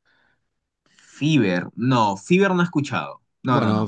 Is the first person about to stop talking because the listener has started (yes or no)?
yes